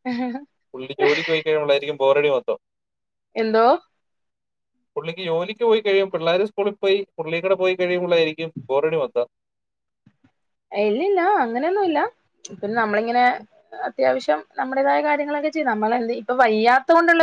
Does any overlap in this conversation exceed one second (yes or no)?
no